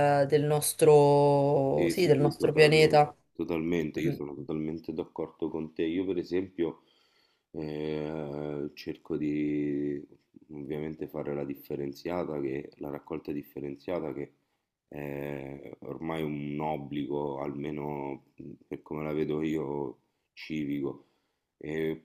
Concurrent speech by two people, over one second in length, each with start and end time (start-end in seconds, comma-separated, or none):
1.7-3.2